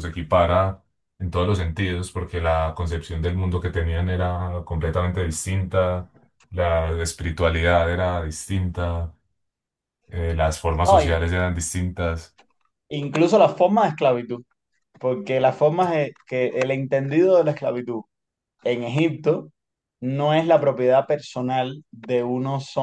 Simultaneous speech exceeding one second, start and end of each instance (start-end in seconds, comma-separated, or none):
none